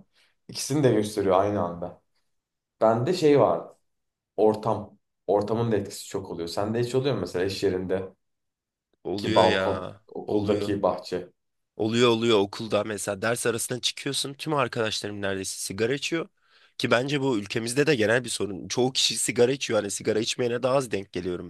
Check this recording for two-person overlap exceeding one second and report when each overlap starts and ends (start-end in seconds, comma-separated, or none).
9.3-10.8